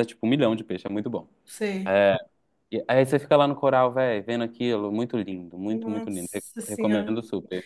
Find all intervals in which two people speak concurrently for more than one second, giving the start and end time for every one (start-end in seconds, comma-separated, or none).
5.7-7.1